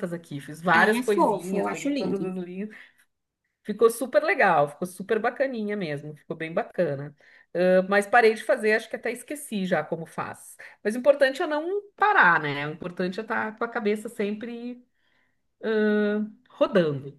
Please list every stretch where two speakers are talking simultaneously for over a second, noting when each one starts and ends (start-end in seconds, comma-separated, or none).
0.7-2.3